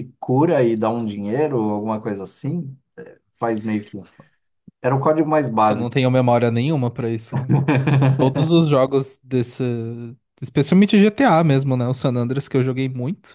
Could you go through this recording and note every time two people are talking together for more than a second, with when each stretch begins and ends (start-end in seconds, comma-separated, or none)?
none